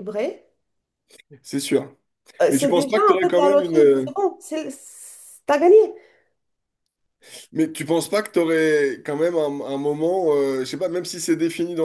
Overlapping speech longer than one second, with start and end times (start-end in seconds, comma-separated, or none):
2.5-4.1